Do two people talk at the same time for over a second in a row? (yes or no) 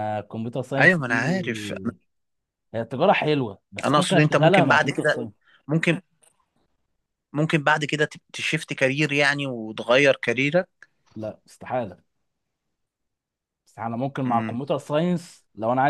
yes